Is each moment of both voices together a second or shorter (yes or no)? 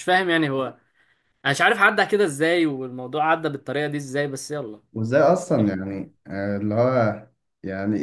yes